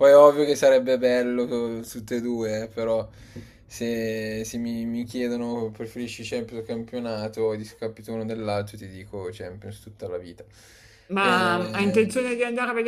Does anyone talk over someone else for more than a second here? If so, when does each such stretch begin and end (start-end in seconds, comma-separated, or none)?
none